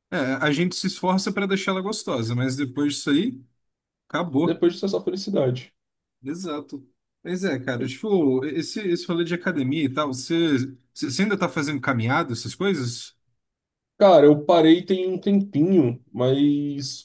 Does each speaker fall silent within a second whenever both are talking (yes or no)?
yes